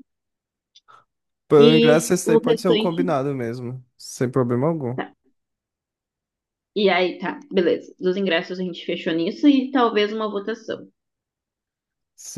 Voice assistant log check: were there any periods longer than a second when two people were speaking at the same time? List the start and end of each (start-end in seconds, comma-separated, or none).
1.7-3.0